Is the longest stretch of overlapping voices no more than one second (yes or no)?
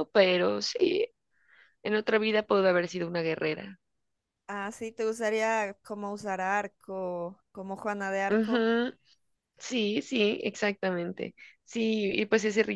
yes